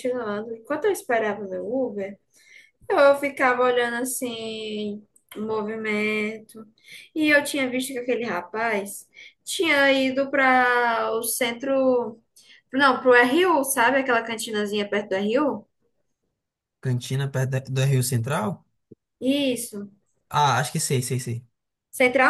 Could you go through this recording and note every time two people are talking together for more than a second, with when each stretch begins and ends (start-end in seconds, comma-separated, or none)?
none